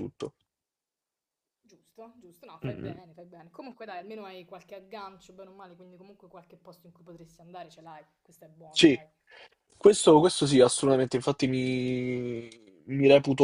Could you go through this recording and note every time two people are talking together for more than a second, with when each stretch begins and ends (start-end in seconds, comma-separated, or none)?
none